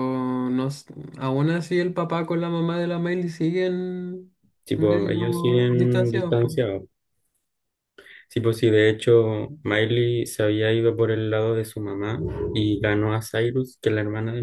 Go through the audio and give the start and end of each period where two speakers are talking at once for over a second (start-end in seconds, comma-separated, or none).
4.8-6.4